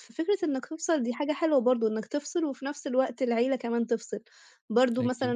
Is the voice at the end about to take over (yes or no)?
no